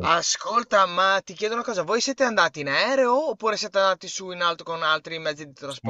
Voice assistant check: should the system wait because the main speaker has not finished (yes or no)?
no